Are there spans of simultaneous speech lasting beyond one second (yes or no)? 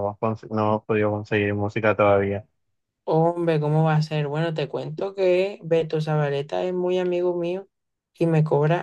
no